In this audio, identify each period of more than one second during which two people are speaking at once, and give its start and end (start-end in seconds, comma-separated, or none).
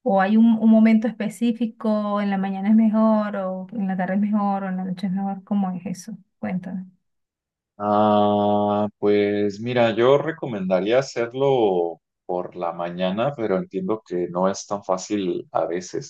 none